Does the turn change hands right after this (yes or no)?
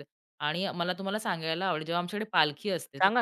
no